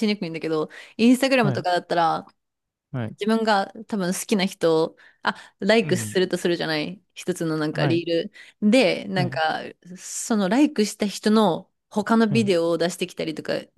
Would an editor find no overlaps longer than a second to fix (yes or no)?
yes